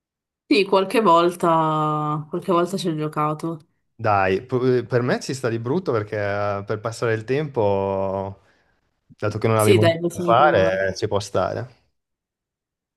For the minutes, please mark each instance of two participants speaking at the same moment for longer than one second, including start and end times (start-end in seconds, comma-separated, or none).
9.5-10.9